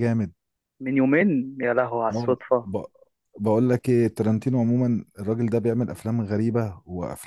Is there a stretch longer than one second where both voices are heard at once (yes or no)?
no